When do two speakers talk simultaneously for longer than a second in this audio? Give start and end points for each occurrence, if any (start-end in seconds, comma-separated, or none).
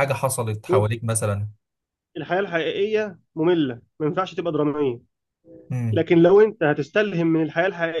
none